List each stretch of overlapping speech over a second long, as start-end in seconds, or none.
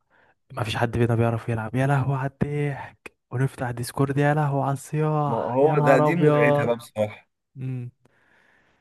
5.3-6.7